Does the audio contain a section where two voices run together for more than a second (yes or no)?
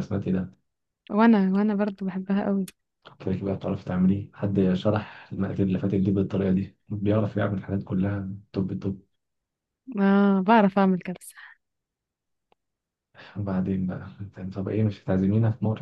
no